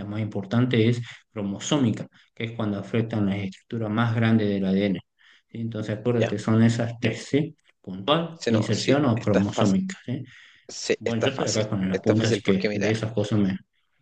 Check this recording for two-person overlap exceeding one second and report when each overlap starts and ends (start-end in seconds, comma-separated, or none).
8.3-9.8, 11.0-12.9